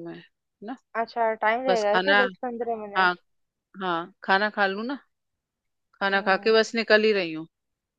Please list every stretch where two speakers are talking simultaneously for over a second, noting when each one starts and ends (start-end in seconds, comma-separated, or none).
none